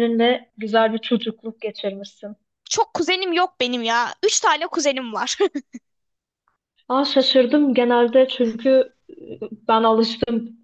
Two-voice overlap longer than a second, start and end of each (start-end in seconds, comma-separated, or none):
none